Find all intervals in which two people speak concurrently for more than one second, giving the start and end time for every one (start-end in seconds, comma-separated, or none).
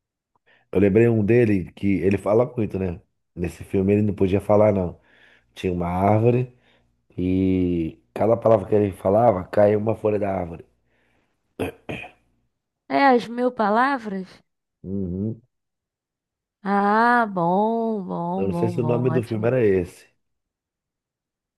18.4-19.6